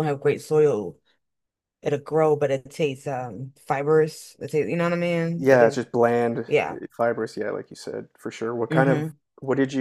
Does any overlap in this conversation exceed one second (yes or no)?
no